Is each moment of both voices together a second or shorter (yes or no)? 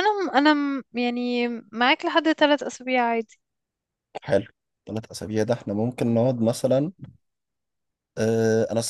yes